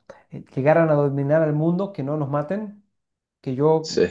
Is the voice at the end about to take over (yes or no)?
no